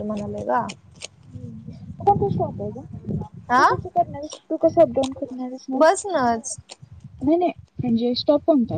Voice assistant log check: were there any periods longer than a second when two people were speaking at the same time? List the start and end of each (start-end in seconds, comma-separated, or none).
none